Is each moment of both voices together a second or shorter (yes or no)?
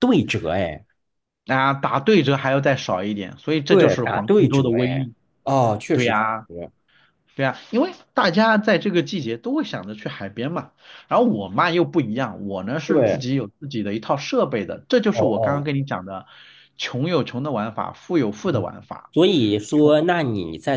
no